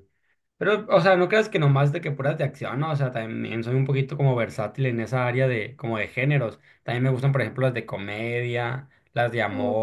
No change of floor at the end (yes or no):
yes